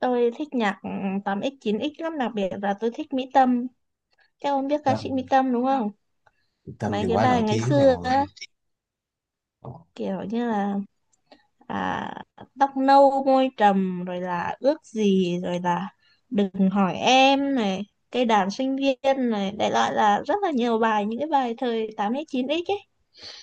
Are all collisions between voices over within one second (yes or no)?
no